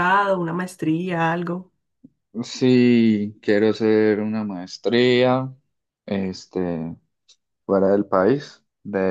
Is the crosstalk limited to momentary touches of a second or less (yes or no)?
yes